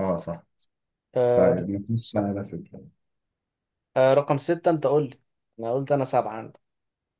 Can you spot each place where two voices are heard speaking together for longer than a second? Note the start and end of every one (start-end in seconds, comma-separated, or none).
none